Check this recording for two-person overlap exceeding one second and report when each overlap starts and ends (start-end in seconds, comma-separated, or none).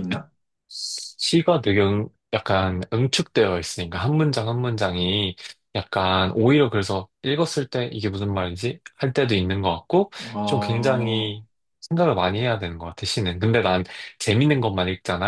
10.2-11.4